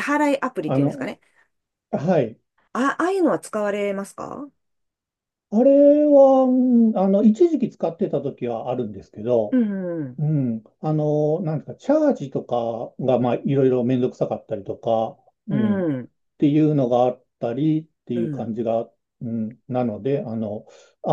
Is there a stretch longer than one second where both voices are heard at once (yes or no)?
no